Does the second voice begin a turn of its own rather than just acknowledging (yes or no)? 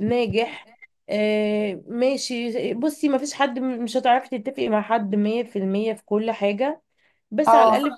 no